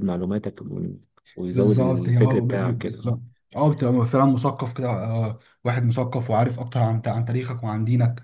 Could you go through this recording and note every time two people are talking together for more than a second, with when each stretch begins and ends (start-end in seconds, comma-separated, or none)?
1.5-3.1